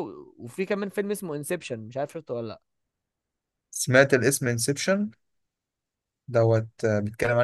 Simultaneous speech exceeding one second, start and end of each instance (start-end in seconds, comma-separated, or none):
none